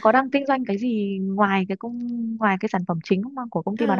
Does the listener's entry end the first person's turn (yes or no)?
yes